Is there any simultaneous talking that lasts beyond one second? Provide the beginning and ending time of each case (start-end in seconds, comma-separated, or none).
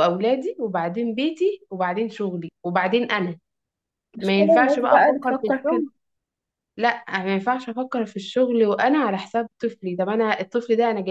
4.2-5.8